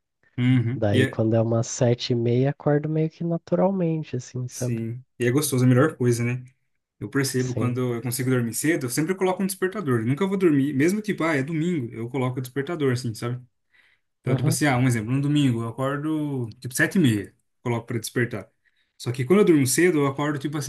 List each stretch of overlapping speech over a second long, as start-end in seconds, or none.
none